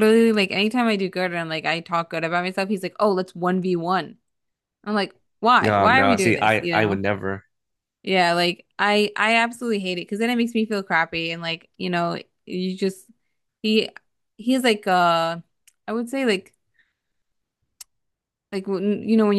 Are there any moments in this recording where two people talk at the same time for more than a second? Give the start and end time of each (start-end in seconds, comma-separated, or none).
5.6-7.0